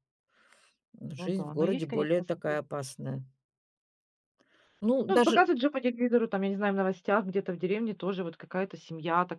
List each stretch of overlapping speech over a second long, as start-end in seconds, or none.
1.1-2.6